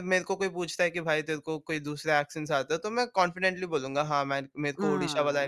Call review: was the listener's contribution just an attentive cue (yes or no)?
no